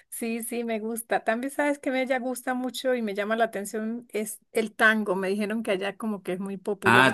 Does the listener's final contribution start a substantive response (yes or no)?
yes